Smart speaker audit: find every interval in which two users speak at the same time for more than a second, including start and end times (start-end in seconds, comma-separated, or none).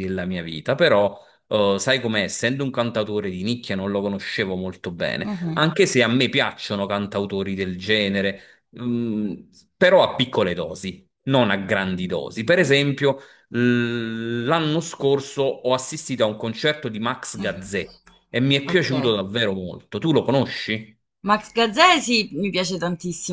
none